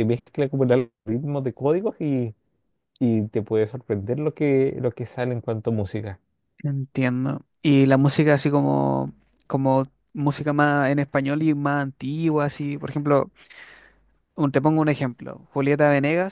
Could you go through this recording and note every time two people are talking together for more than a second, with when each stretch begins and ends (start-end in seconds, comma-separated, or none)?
none